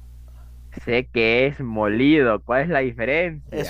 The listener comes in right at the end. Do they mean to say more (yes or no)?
yes